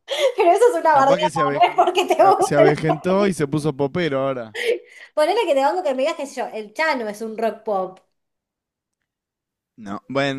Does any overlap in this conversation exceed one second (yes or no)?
yes